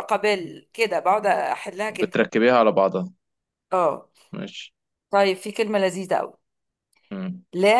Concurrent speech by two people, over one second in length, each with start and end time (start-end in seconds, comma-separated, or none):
none